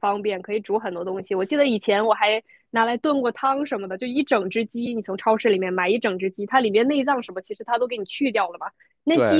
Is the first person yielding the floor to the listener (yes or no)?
no